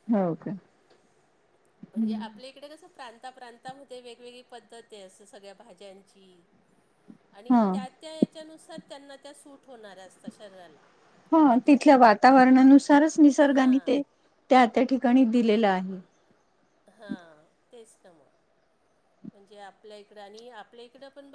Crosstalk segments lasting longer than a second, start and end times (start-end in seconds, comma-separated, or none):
none